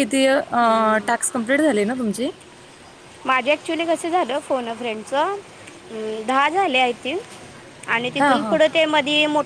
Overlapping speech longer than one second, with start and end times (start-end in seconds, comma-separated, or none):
none